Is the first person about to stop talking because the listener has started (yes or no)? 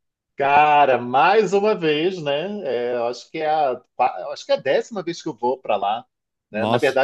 no